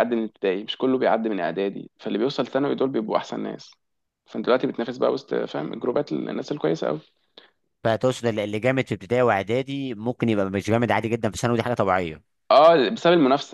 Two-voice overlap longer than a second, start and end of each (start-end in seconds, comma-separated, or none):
none